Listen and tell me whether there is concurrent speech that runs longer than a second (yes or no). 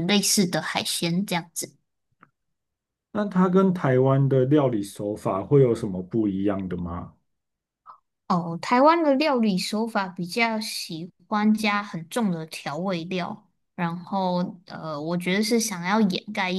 no